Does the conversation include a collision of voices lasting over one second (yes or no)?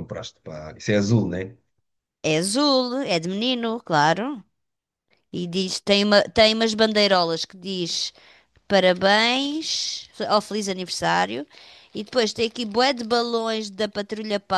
no